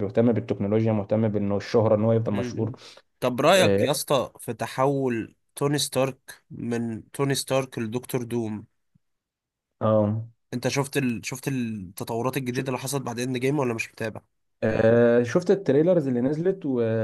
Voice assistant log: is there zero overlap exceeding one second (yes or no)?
yes